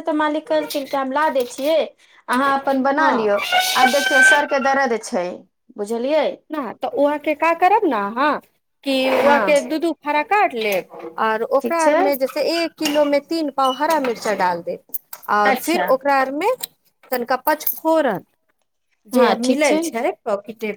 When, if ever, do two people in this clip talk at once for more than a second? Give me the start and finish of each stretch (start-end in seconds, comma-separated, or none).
none